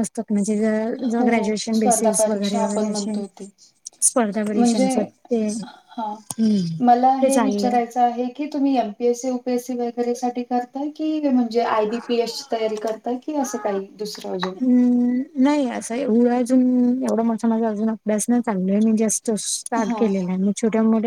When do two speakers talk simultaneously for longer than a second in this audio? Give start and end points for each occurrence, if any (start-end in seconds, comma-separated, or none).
1.1-3.1